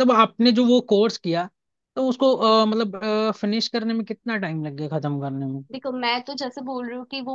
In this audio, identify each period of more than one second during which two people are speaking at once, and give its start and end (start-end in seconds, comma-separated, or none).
none